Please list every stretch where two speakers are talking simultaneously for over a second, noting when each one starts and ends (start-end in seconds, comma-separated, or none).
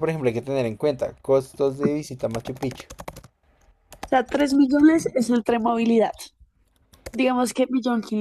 none